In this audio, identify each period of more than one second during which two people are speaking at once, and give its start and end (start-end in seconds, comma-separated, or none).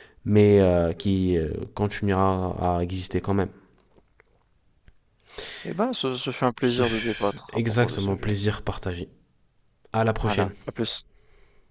6.6-8.3